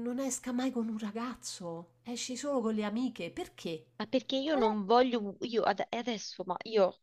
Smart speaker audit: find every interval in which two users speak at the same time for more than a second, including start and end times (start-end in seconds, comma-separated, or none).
none